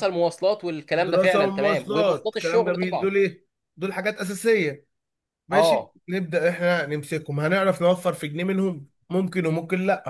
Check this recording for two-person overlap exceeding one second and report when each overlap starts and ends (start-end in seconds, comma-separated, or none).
1.0-3.1